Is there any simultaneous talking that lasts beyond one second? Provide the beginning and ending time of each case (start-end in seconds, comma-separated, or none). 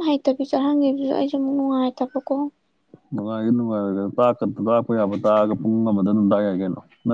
none